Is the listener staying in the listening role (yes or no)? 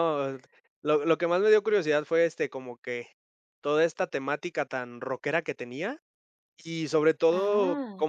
yes